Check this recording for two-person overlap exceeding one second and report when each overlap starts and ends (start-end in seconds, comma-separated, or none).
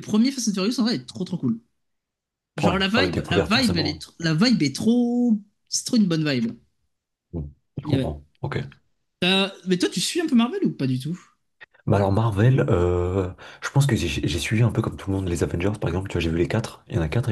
2.6-4.0